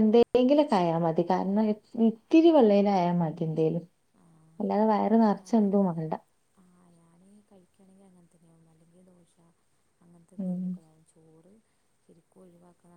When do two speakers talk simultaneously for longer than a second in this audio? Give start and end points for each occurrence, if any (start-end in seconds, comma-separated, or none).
none